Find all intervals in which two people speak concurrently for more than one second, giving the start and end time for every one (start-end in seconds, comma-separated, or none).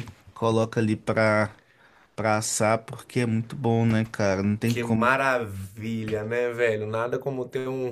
none